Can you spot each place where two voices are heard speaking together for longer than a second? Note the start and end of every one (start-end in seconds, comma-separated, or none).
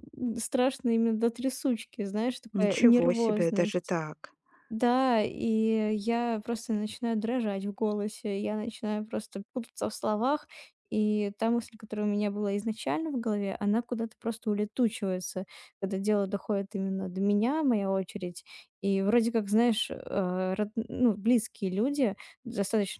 2.5-3.9